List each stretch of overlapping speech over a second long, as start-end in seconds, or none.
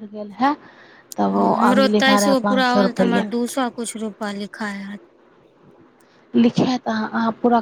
none